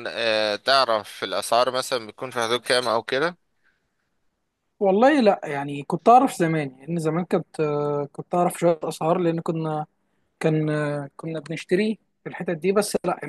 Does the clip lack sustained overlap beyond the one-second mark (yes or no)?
yes